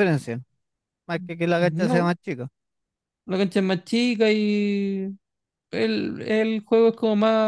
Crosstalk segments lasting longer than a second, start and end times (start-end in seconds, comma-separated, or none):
none